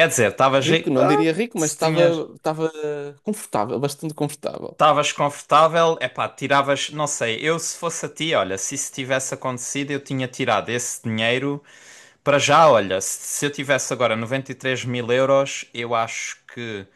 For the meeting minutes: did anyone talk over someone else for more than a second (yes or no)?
yes